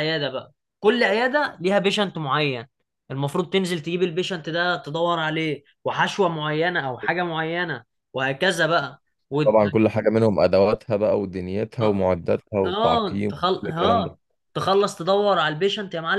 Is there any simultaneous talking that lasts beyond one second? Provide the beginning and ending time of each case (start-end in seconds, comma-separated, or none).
12.6-14.1